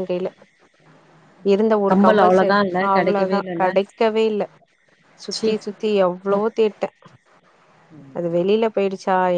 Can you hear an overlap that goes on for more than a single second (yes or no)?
yes